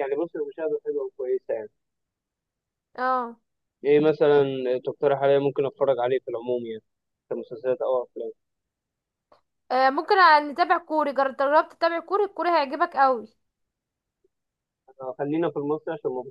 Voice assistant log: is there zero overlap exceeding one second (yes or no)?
yes